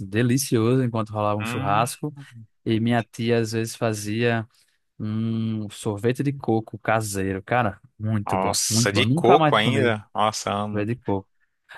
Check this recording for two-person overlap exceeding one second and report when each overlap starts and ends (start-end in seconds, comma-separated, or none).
8.2-9.9